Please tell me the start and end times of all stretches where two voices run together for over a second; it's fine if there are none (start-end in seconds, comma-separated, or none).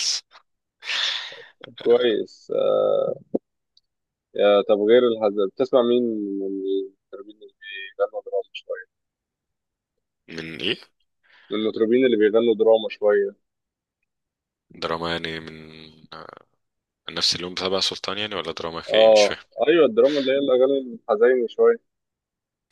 none